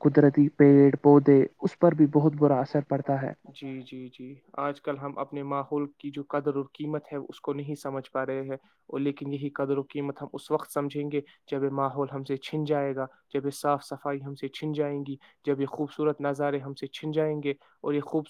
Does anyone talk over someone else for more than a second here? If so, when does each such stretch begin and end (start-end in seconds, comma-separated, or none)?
none